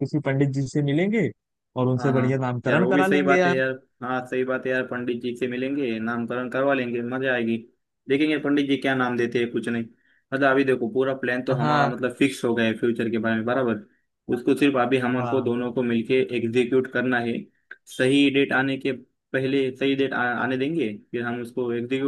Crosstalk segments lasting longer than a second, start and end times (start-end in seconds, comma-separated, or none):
2.0-3.6